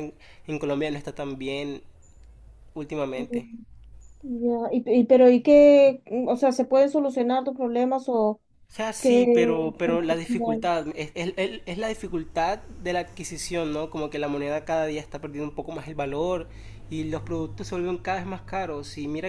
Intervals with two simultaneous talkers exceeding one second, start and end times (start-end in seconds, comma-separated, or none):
9.0-10.7